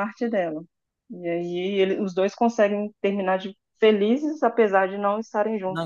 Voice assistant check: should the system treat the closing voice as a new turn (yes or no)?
yes